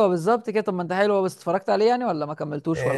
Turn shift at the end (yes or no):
yes